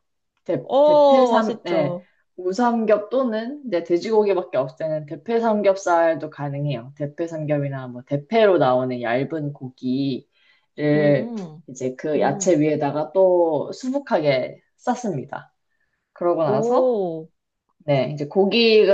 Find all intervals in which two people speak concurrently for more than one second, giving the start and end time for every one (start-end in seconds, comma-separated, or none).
0.6-2.0